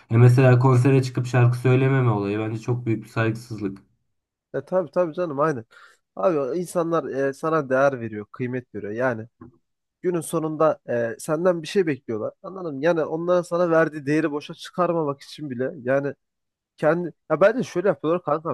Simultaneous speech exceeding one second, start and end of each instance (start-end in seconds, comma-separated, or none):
none